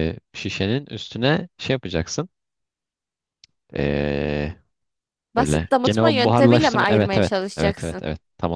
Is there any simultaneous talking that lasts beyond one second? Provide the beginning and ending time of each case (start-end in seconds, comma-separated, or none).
5.4-8.0